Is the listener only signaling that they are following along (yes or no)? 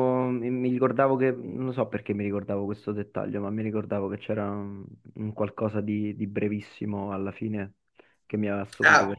no